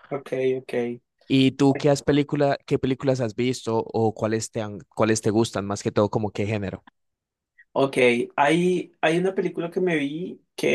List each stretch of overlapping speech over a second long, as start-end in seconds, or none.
none